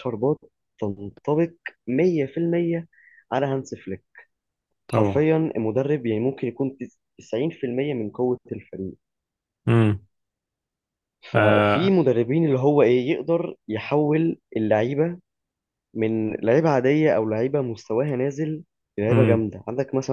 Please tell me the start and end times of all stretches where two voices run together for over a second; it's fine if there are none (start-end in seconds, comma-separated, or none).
none